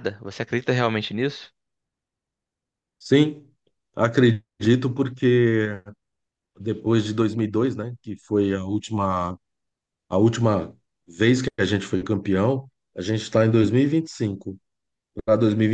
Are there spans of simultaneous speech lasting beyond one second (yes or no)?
no